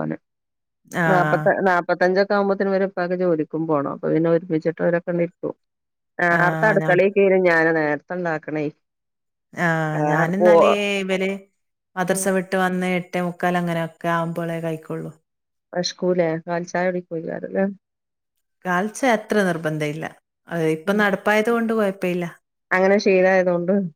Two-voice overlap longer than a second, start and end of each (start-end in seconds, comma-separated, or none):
none